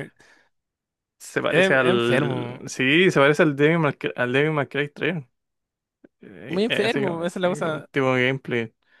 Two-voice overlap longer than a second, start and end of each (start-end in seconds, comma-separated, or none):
1.5-2.7, 6.5-7.9